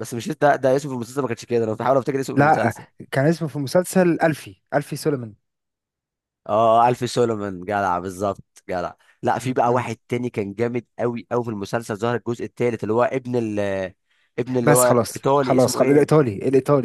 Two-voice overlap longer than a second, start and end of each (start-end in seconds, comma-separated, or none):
14.6-16.2